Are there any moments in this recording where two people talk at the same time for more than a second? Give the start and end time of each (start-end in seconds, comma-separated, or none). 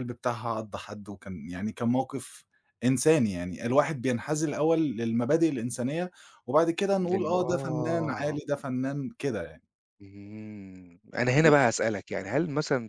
7.0-8.4